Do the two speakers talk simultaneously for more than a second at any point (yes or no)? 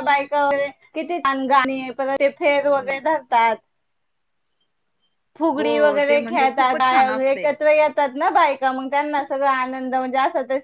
yes